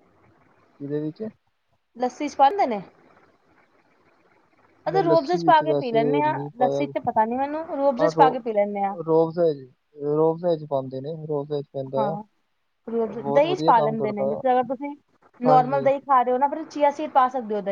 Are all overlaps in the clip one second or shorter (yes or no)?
no